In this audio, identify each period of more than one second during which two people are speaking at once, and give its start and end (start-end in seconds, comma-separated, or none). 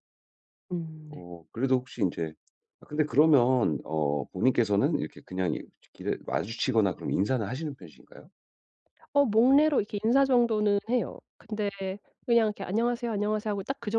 none